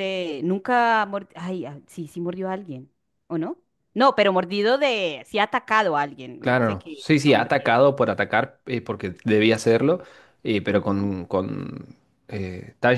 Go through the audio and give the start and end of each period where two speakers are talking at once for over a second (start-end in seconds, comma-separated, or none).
6.4-7.7